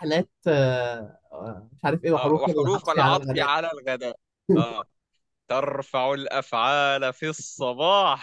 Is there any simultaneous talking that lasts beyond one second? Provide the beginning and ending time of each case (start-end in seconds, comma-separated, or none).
2.2-3.5